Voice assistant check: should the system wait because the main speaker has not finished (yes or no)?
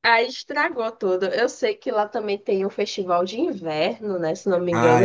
no